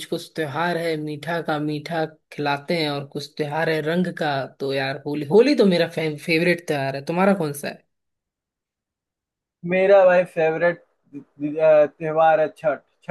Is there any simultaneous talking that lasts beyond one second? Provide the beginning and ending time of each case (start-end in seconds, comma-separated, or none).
none